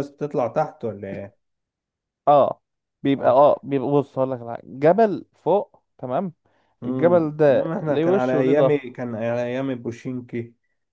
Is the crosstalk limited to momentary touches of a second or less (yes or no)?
no